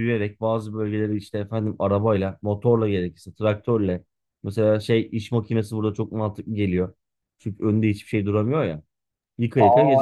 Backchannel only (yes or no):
no